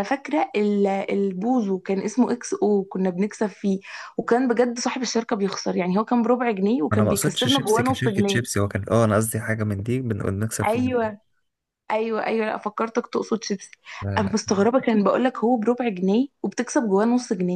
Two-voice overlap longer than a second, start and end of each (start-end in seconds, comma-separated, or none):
6.9-8.4